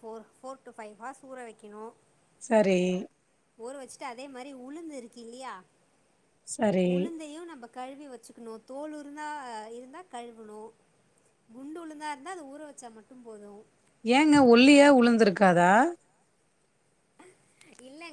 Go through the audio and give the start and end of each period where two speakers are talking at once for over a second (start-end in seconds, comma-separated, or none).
none